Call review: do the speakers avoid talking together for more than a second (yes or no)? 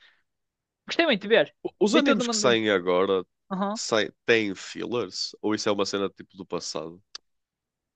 yes